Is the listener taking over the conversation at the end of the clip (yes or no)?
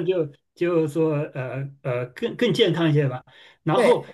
no